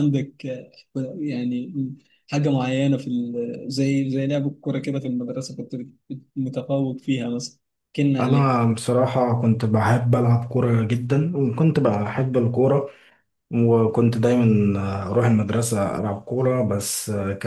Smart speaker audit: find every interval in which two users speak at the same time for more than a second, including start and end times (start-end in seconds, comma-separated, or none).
none